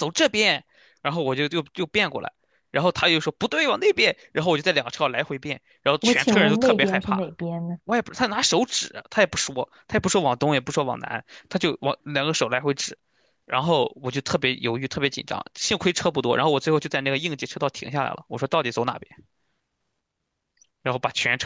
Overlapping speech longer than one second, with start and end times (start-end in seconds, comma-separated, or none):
6.0-7.3